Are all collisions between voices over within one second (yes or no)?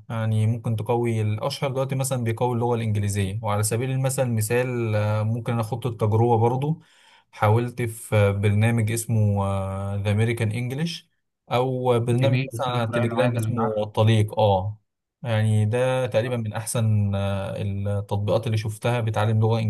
no